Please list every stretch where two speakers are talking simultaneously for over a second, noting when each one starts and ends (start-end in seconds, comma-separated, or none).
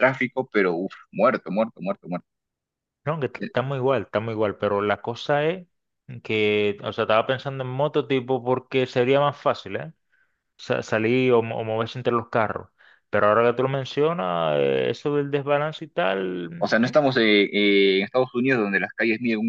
none